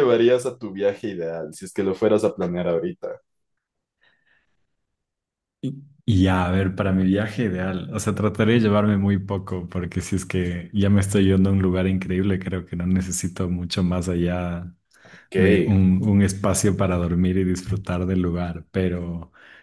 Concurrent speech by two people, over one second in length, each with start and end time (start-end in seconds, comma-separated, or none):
none